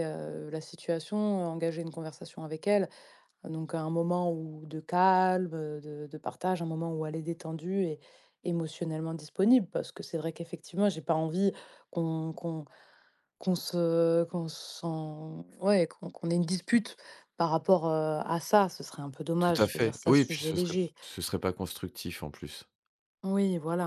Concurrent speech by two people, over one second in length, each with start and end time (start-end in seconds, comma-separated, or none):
19.4-20.9